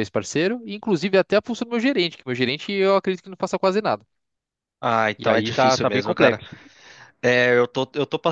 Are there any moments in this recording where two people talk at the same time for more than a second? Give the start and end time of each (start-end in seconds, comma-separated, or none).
5.2-6.4